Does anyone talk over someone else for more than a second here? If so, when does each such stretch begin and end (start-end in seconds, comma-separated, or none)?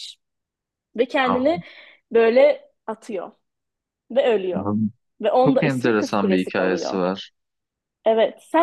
5.5-7.0